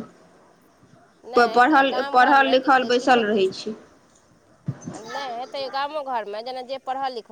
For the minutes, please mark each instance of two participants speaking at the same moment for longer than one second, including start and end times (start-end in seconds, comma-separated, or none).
1.4-2.8